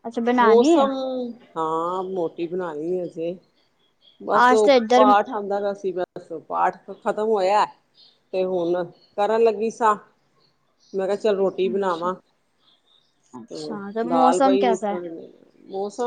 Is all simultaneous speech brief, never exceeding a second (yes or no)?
no